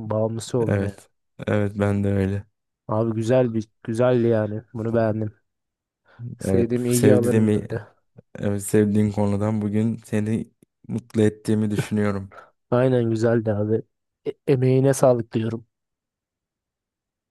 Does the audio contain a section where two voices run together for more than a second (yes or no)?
yes